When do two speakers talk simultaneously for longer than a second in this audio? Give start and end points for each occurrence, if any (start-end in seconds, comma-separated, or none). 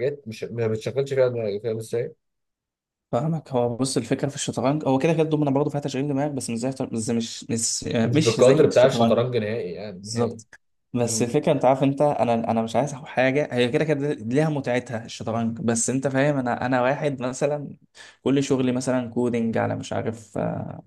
8.0-9.2